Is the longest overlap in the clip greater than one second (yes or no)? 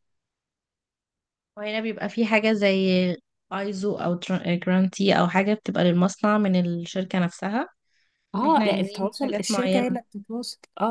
yes